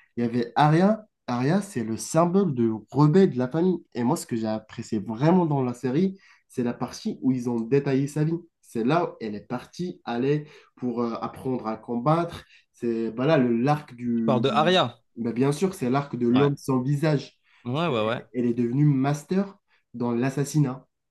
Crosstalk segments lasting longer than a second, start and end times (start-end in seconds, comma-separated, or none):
none